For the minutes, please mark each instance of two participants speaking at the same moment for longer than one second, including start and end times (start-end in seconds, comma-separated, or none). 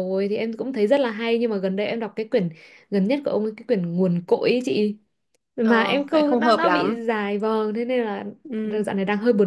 5.6-7.0